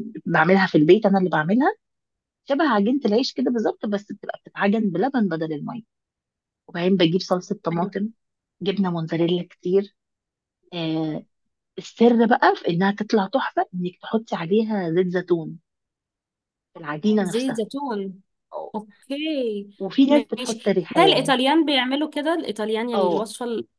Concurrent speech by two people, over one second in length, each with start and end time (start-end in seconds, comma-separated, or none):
20.1-21.3